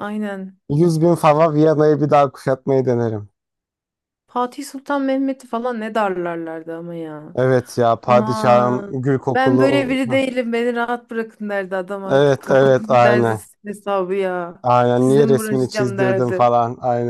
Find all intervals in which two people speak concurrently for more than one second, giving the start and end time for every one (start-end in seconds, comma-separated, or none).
8.1-10.2, 12.1-13.4, 15.0-16.5